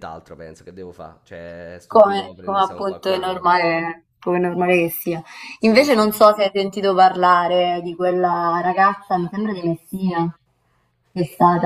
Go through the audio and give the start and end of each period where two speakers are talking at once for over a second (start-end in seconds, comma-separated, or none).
1.9-3.6